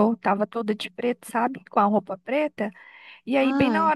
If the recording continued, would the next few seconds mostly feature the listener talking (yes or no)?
no